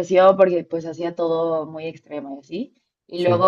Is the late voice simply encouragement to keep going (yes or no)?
yes